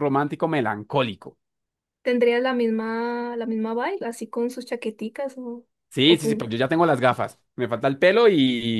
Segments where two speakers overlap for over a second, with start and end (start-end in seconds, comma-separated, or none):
none